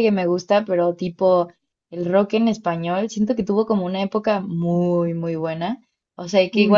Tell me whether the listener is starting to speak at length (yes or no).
no